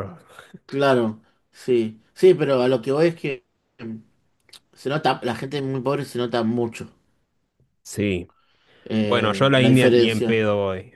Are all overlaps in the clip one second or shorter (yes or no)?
no